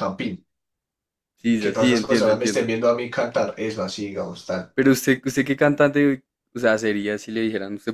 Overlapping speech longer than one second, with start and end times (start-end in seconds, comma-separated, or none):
1.5-2.7